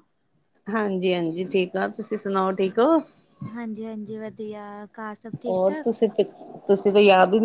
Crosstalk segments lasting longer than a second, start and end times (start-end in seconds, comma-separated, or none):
none